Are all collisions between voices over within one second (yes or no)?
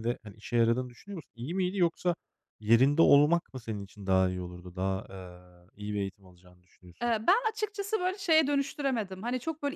yes